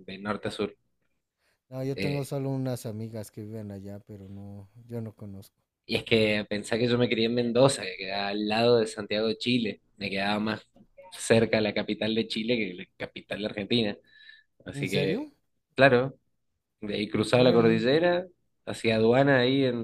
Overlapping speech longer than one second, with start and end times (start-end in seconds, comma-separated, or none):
none